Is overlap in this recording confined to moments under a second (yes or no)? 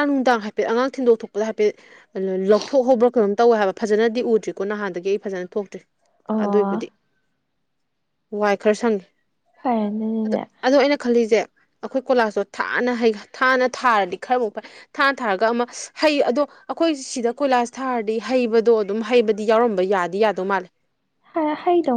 yes